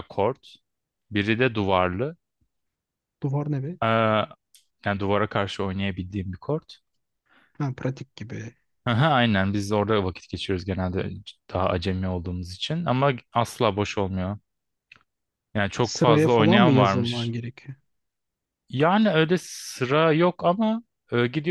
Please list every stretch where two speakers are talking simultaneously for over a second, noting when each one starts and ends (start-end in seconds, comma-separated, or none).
15.8-17.3